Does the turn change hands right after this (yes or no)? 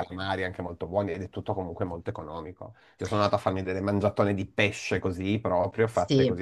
no